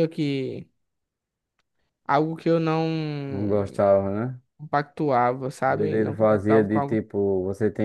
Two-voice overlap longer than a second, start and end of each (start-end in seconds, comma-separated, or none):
5.7-7.0